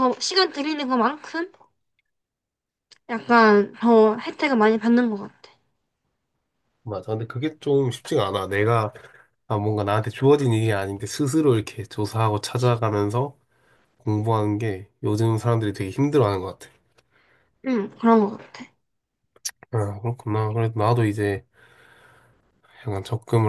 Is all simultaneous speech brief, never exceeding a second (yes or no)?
yes